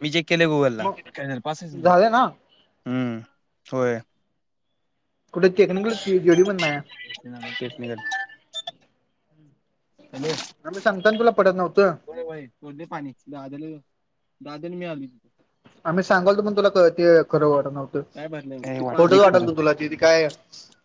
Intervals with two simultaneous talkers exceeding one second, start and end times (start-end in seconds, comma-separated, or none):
18.1-20.0